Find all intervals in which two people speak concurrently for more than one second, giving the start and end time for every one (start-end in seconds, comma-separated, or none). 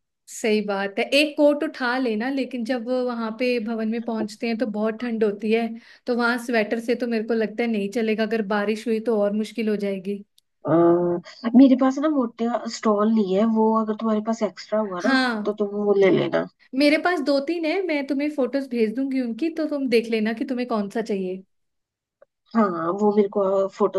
none